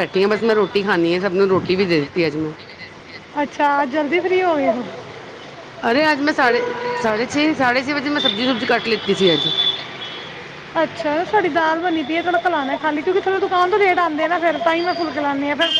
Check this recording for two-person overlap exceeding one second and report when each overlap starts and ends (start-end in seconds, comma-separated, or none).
none